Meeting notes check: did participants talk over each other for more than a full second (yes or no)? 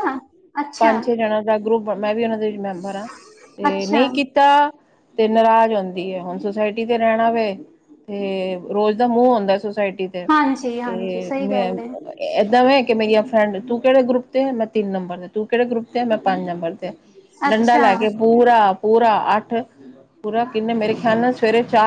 yes